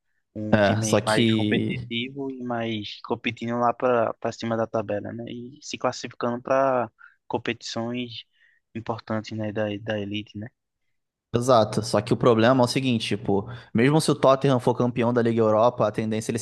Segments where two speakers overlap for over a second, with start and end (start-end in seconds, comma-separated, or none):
0.5-1.9